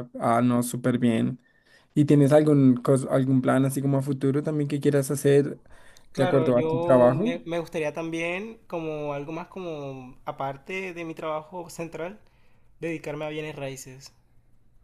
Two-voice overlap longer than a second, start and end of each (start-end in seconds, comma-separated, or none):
6.2-7.3